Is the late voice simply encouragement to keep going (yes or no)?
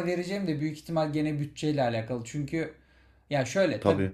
yes